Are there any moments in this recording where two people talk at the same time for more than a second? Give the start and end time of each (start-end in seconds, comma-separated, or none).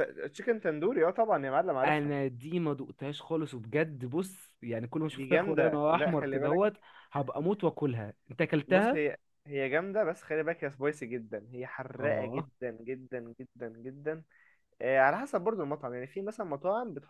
5.2-6.6